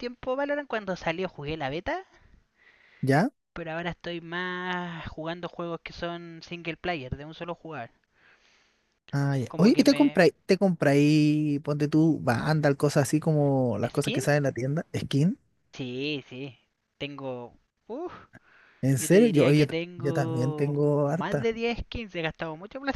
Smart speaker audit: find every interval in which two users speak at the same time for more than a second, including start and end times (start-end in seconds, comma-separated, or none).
19.0-21.6